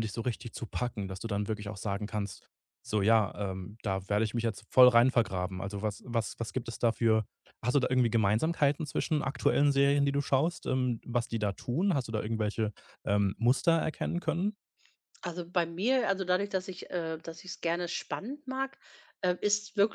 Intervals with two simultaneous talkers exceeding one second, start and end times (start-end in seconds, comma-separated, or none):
none